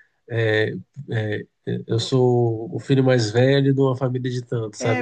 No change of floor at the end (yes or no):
yes